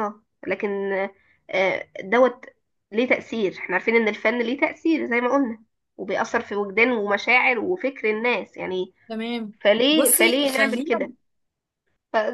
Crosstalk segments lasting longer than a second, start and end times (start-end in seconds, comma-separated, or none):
9.9-11.1